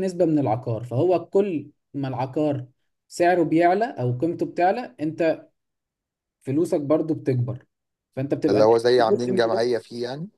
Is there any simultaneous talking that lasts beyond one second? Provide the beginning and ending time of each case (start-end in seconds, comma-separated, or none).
8.5-9.7